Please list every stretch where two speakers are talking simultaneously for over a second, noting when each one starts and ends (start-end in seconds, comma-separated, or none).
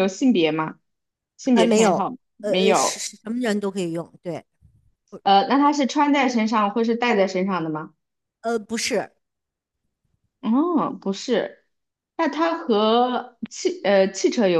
1.5-3.1